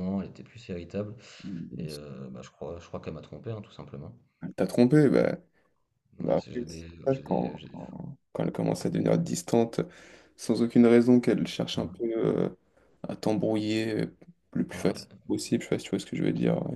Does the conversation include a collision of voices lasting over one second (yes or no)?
yes